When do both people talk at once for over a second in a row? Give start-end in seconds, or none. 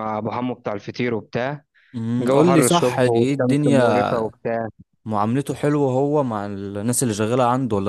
2.2-3.9